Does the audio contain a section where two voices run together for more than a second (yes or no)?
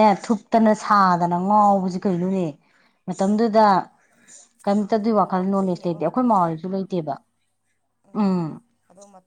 yes